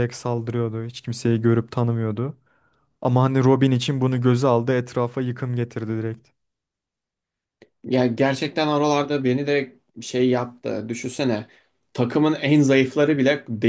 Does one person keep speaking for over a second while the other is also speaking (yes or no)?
no